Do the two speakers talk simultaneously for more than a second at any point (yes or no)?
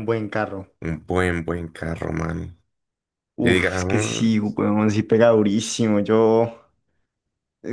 yes